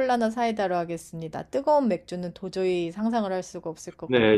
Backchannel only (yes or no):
no